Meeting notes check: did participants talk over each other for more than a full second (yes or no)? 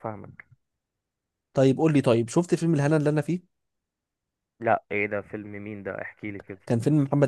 no